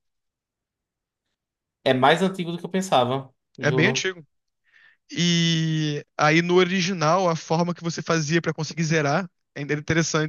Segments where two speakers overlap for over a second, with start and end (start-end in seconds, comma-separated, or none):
none